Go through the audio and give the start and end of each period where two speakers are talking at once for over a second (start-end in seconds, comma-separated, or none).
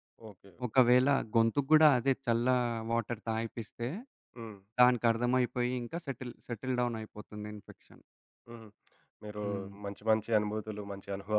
none